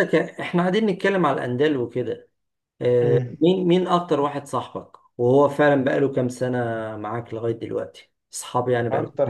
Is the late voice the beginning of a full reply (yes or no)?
yes